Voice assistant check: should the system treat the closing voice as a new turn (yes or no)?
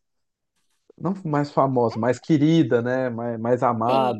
yes